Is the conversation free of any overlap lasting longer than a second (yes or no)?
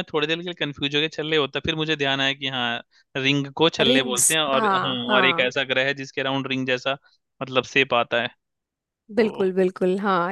no